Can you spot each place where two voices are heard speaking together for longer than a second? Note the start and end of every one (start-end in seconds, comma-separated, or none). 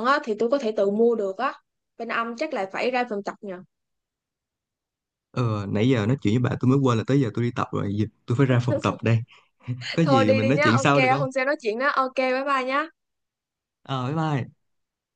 10.0-11.3